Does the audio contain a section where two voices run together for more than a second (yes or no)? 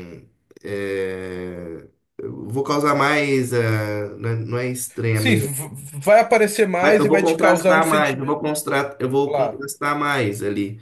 yes